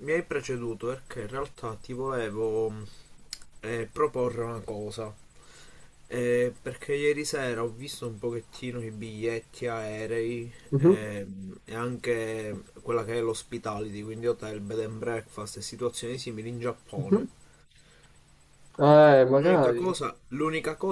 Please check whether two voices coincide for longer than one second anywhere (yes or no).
no